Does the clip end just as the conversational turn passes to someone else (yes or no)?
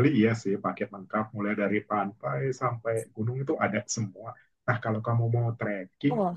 no